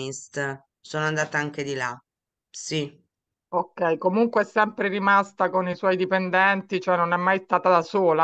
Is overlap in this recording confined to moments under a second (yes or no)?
yes